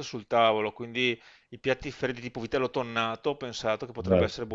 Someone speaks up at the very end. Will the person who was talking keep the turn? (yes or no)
yes